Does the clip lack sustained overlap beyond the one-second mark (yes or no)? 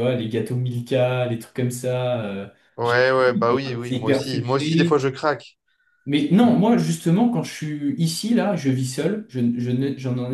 no